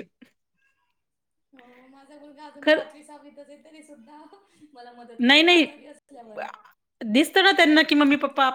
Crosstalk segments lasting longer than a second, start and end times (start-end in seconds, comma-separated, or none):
none